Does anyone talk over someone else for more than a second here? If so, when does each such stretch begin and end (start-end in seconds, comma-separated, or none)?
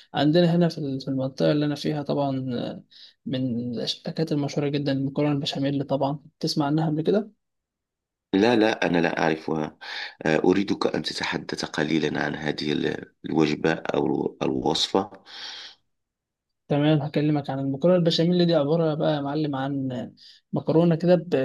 none